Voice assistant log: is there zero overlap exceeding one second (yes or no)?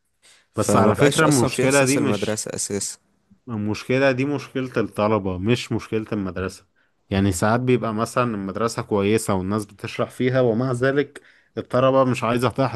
no